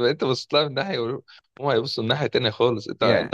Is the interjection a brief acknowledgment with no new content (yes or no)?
yes